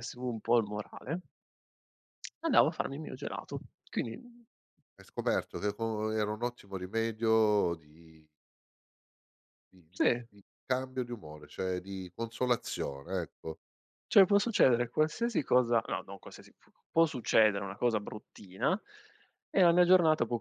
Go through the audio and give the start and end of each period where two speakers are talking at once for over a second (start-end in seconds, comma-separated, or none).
none